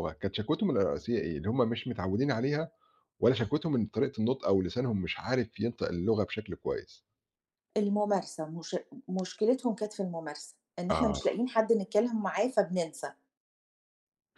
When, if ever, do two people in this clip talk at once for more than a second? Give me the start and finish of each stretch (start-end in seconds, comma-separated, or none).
none